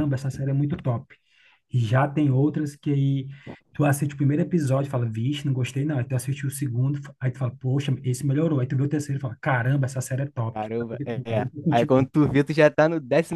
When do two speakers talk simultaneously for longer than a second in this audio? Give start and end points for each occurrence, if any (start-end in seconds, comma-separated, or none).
10.5-12.1